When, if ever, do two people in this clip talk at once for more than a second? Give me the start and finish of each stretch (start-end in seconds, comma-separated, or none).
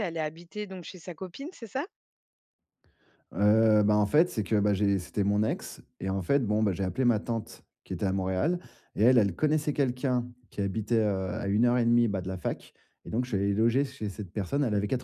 none